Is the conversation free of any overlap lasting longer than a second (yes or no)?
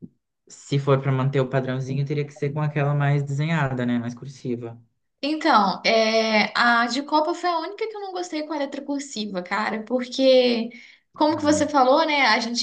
yes